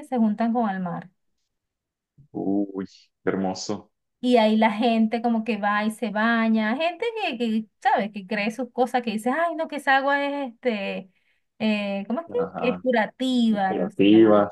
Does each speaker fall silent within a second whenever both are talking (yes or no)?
yes